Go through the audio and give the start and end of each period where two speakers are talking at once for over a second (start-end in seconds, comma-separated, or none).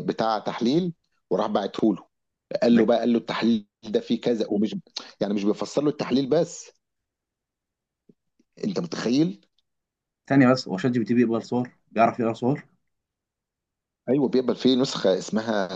none